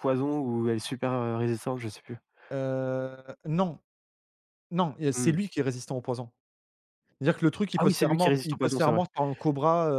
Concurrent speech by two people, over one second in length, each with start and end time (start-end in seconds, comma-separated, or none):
7.8-9.0